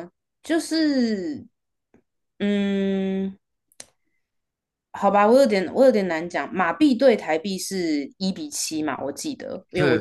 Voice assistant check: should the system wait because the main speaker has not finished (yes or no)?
yes